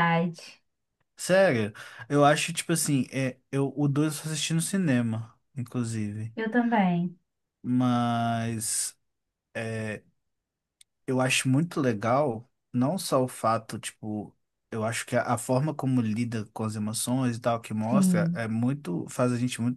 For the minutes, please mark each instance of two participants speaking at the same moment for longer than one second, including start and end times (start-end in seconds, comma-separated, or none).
none